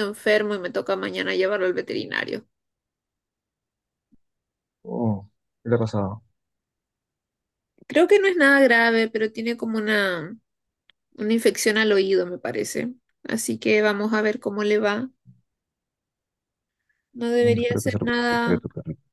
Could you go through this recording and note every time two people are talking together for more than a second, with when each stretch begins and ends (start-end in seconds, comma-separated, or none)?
17.4-18.6